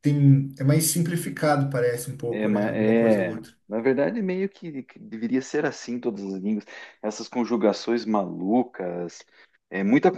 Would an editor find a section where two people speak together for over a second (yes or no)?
yes